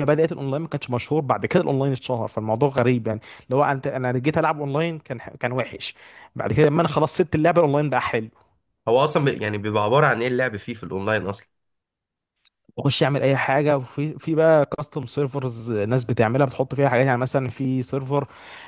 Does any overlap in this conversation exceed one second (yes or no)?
no